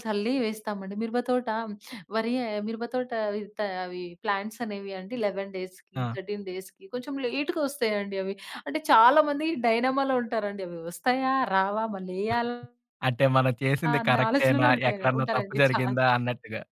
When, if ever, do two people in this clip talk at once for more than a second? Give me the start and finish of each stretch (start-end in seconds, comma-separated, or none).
13.9-15.9